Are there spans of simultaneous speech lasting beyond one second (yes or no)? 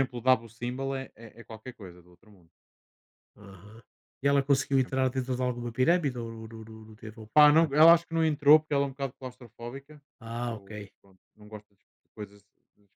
no